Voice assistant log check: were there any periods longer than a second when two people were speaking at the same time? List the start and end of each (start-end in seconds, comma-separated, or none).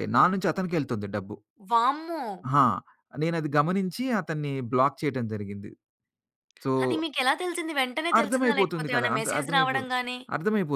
8.2-9.8